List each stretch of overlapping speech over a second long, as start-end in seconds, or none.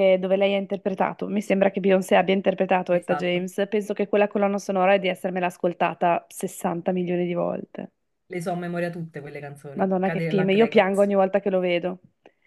9.7-11.1